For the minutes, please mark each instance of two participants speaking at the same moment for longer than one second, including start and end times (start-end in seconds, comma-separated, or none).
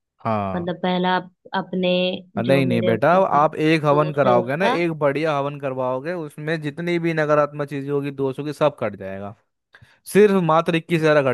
2.5-4.8